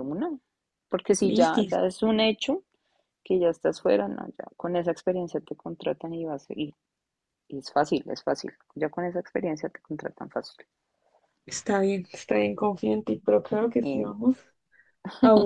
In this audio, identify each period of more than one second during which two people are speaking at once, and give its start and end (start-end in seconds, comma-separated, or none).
none